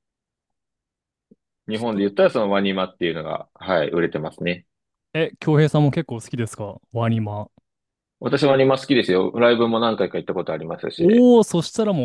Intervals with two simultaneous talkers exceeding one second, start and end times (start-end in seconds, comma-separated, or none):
none